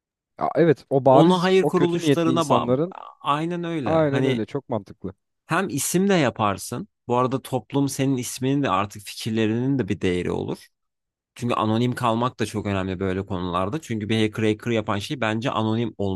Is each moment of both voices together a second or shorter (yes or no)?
no